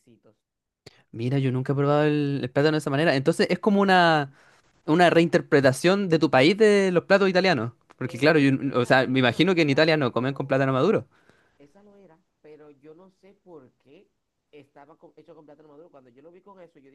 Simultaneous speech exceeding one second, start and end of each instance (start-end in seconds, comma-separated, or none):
8.1-10.6